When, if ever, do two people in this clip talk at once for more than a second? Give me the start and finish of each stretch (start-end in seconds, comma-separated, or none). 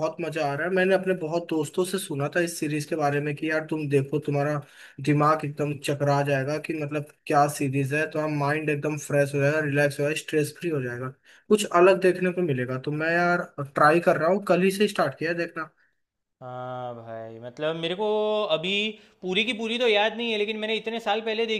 none